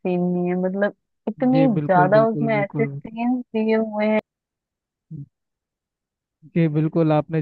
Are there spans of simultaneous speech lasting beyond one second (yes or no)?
yes